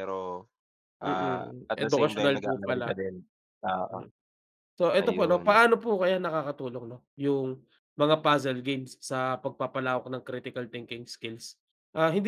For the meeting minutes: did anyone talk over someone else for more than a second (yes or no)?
yes